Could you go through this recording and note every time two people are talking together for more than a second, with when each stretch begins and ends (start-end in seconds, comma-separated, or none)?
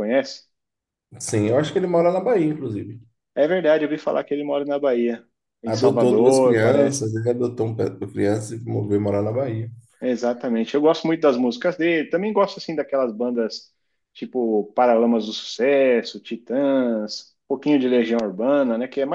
5.6-7.1